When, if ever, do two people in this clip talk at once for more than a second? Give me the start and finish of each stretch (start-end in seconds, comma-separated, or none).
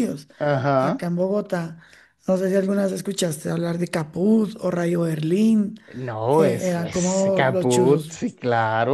6.4-8.2